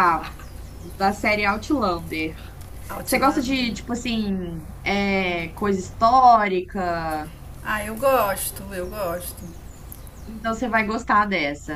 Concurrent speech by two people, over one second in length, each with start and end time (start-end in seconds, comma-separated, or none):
none